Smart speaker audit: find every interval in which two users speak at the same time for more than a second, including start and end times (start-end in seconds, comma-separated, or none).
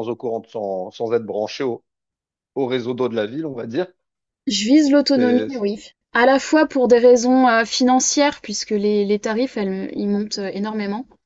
none